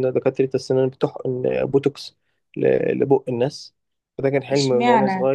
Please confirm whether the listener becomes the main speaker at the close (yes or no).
yes